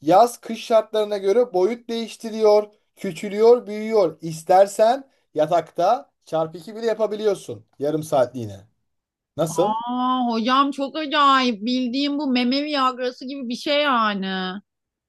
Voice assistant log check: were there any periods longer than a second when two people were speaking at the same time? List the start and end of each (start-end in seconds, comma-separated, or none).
none